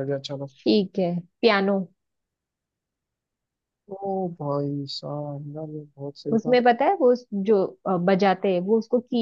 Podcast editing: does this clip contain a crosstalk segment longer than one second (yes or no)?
no